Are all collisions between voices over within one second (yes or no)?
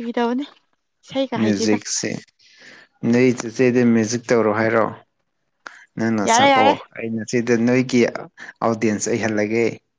yes